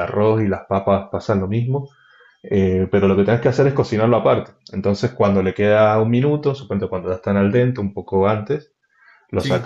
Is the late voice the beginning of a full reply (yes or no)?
no